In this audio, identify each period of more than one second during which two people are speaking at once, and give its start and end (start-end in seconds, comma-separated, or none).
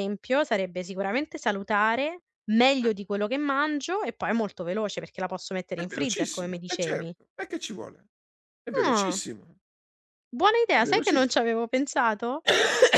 5.7-7.1